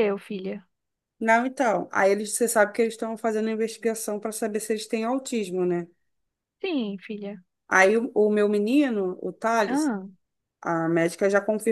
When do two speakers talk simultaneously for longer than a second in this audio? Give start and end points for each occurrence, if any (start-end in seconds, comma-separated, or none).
none